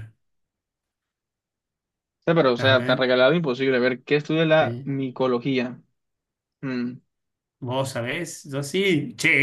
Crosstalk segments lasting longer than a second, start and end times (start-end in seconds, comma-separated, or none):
none